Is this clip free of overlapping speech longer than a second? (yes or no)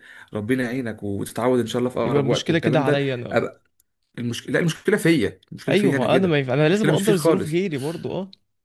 no